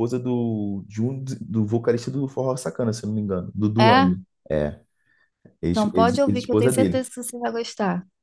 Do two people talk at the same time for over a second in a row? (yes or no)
yes